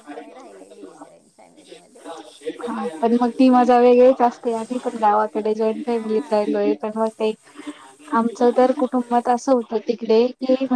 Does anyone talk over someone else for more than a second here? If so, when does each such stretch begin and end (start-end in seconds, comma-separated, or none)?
none